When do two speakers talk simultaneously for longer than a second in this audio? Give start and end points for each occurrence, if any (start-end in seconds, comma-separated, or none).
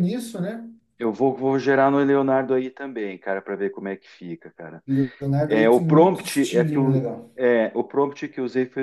5.5-7.3